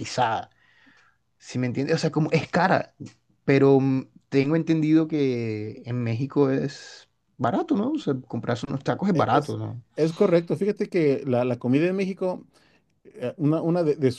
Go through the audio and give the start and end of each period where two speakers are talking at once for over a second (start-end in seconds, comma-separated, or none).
none